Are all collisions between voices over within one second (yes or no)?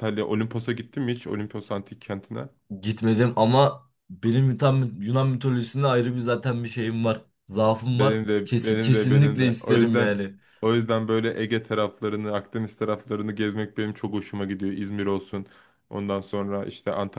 no